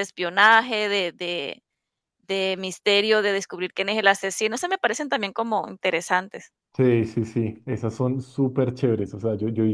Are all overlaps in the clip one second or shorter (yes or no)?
yes